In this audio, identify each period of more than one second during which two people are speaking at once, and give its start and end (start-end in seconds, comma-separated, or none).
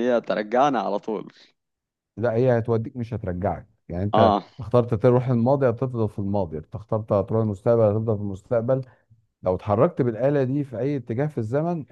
none